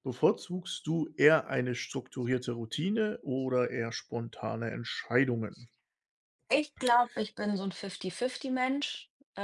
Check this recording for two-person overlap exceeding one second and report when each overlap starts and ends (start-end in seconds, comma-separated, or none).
none